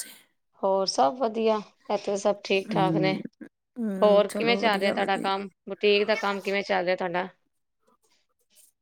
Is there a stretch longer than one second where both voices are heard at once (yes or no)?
yes